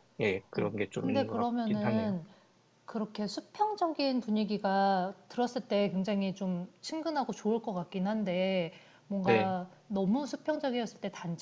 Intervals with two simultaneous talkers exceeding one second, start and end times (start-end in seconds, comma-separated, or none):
0.5-2.2